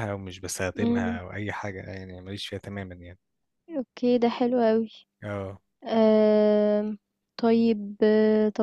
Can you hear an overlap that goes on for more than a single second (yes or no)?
no